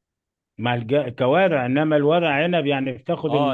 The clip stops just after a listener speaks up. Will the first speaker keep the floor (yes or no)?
no